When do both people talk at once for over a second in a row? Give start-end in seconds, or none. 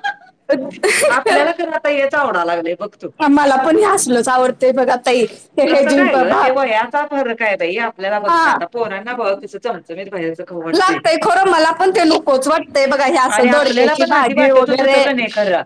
13.3-15.0